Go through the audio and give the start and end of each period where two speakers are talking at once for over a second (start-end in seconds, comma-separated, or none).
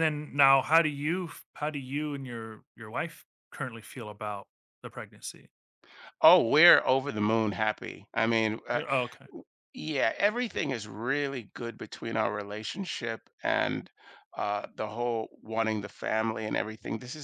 none